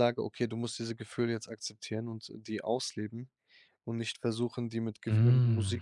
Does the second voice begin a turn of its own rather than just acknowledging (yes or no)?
no